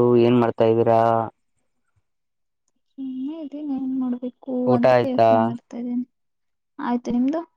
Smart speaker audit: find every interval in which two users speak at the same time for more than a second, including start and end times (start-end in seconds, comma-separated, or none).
none